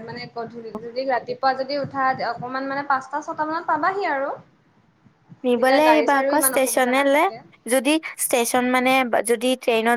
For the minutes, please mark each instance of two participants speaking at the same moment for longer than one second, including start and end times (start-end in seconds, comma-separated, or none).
5.5-7.2